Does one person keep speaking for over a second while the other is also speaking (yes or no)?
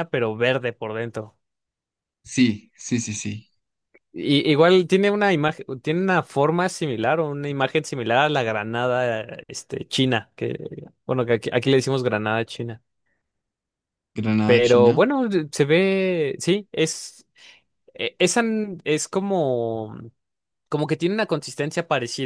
no